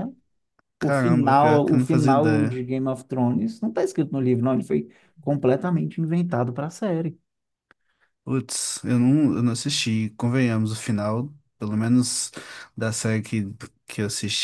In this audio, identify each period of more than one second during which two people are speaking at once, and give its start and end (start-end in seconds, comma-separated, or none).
0.8-2.6